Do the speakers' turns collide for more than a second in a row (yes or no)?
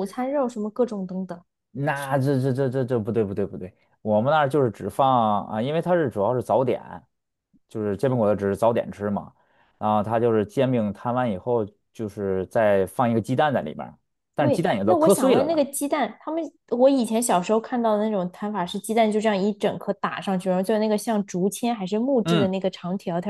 yes